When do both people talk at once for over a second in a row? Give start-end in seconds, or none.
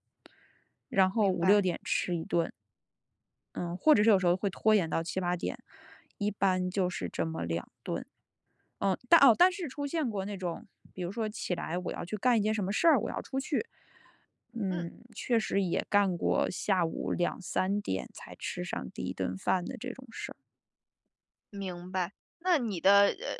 none